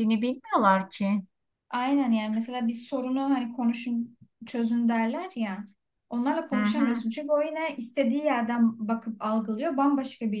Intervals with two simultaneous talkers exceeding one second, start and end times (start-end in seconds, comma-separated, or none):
none